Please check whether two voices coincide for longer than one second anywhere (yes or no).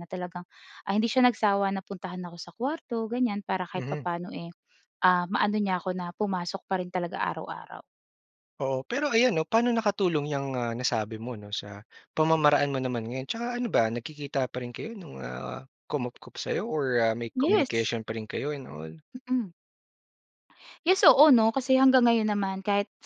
no